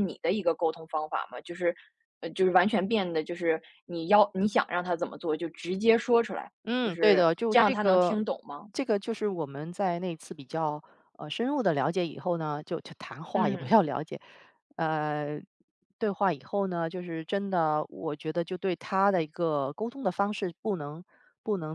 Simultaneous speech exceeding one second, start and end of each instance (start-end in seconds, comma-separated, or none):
6.7-8.2